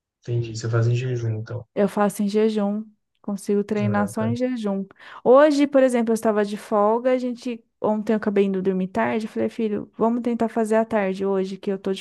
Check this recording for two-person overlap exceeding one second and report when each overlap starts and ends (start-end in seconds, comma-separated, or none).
none